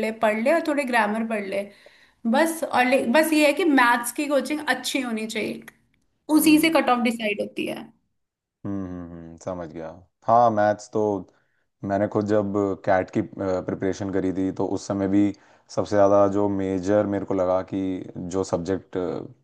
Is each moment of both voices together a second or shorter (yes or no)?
yes